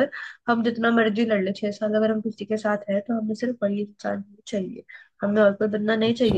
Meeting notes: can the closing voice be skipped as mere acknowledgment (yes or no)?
yes